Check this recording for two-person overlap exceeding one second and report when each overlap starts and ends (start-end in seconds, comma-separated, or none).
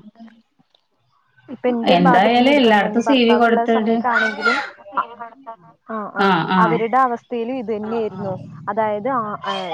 2.0-3.9